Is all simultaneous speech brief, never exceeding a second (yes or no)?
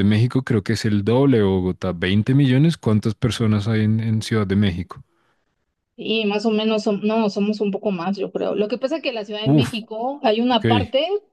yes